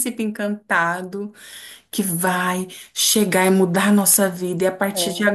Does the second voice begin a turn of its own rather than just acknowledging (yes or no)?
no